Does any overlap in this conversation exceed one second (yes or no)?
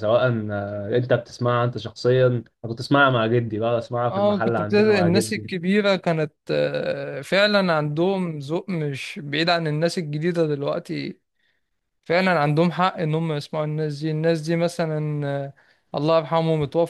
yes